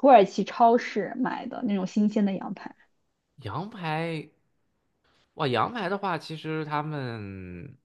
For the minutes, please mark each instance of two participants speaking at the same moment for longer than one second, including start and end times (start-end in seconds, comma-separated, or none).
none